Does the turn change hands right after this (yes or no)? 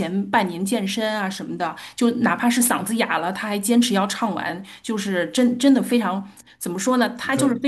no